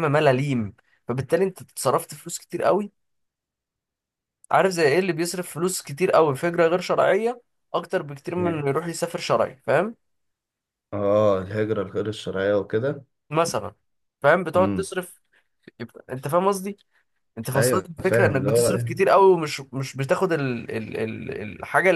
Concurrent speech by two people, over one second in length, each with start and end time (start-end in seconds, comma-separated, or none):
17.6-19.1